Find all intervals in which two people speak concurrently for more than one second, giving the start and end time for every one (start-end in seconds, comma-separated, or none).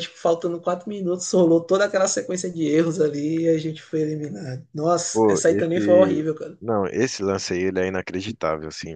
5.1-6.6